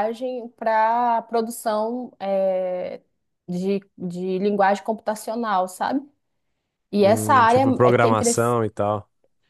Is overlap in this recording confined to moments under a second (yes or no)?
no